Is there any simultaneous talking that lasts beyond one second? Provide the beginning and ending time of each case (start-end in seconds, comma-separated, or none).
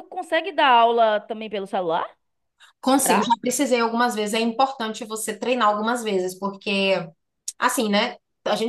none